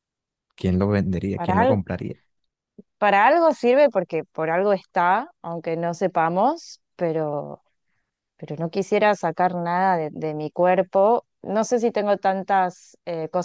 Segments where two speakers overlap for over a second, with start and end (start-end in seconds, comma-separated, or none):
none